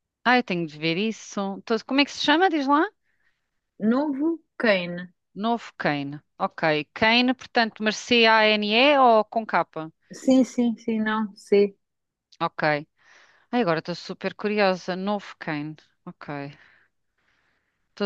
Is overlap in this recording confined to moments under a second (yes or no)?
yes